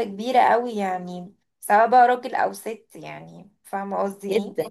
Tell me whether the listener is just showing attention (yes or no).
no